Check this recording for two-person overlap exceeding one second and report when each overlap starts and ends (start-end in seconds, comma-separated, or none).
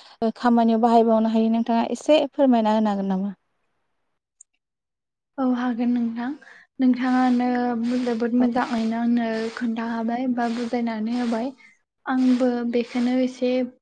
none